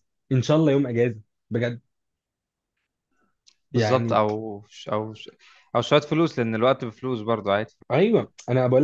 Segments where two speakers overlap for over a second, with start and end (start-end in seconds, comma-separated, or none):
none